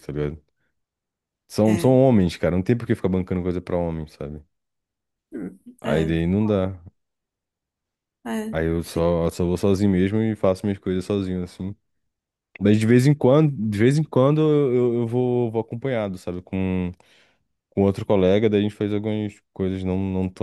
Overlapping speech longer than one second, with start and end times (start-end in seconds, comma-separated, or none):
none